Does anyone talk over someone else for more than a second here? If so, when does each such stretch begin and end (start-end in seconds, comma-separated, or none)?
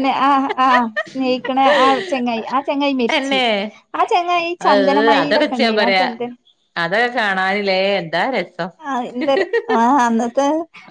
4.7-6.1